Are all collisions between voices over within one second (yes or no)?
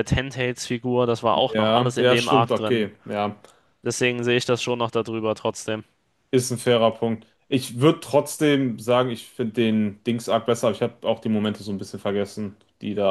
no